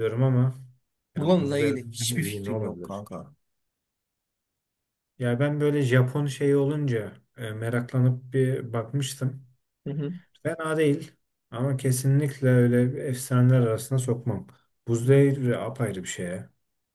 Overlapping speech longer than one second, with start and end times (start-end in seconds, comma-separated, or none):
1.1-3.0